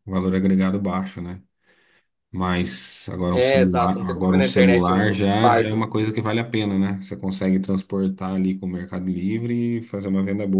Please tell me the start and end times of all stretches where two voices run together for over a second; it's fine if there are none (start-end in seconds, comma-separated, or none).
3.3-5.9